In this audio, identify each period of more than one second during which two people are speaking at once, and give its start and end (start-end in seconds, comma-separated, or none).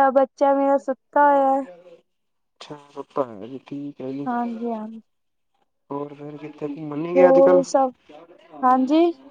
none